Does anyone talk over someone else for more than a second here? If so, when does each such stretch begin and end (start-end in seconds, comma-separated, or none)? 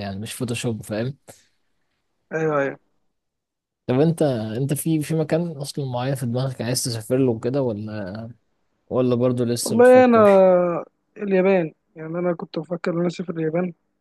none